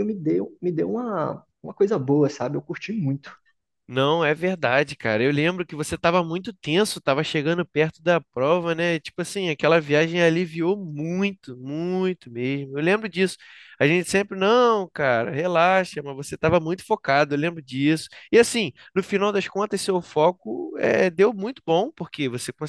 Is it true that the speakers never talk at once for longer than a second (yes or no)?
yes